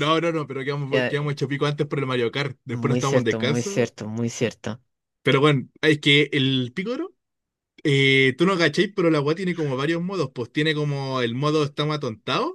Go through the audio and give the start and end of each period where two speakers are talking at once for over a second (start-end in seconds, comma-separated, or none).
2.7-3.9